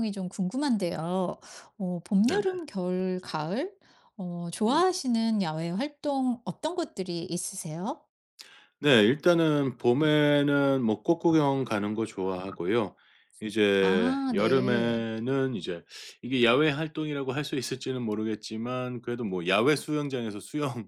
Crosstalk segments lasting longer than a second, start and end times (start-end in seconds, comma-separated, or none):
13.8-15.0